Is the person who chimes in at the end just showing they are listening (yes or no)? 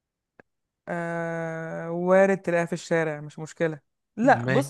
yes